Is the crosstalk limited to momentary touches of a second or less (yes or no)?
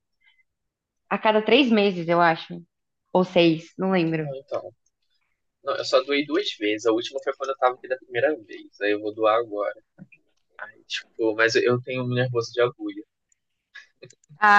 yes